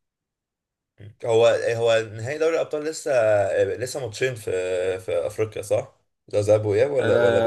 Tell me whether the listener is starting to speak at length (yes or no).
yes